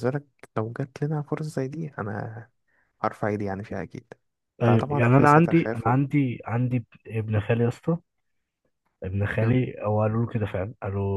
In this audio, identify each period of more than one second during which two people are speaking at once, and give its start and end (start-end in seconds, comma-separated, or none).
4.6-6.0